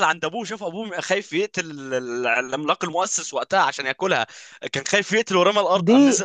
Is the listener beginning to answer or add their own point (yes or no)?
yes